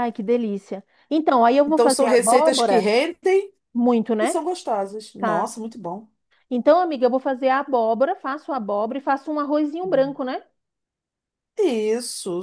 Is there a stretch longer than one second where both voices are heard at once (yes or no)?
yes